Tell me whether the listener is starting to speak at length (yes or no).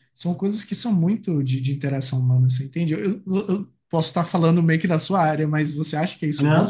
yes